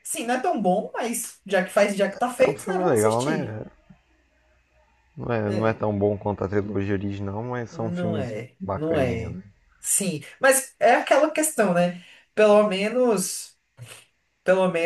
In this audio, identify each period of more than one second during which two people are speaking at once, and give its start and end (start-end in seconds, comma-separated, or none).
2.4-3.6, 7.7-9.4